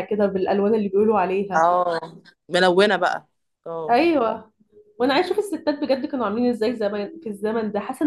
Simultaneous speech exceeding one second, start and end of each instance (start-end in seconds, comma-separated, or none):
none